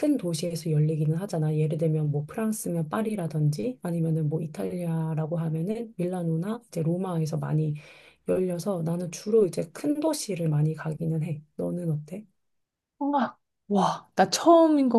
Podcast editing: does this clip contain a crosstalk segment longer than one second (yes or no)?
no